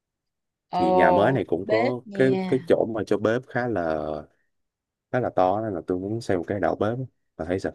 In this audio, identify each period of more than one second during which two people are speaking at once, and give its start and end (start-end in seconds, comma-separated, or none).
0.7-2.7